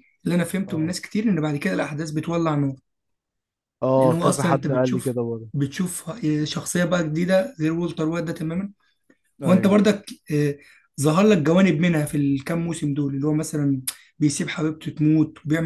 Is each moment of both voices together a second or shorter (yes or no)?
no